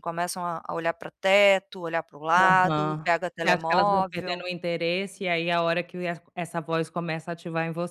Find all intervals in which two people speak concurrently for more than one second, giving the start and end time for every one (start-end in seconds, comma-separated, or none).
2.4-4.4